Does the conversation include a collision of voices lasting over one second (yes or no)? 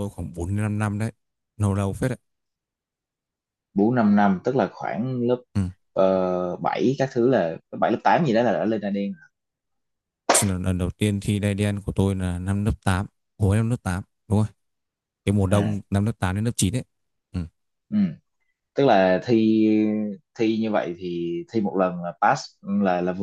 no